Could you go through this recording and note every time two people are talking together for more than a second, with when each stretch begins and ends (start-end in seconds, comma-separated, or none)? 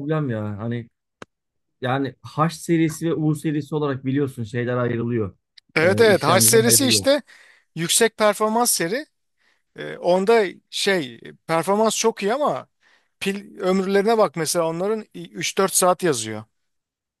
5.8-7.1